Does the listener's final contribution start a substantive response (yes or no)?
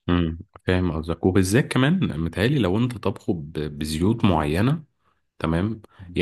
no